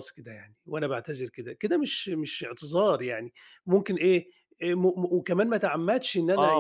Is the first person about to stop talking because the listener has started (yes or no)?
yes